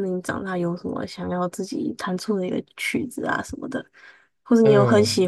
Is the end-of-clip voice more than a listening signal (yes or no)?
no